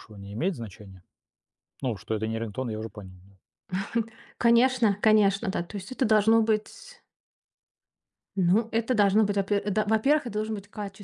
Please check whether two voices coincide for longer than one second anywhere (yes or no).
no